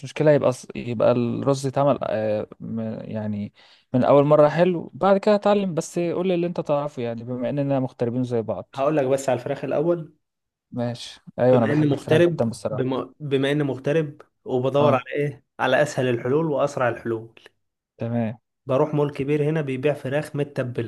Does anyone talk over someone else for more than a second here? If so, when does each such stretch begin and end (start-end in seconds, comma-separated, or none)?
11.5-12.9